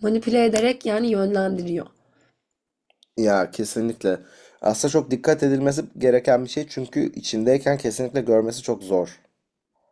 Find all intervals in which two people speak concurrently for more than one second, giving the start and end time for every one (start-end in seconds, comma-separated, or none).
none